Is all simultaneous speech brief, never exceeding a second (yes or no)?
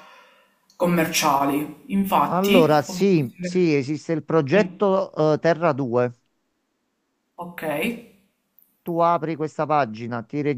no